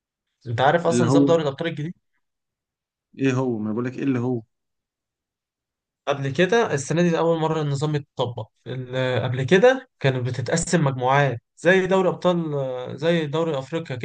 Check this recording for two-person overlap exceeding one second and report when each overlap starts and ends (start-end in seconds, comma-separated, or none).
none